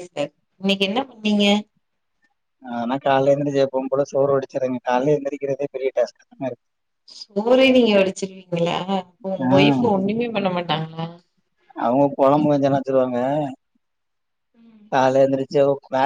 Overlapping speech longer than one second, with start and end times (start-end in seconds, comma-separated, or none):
none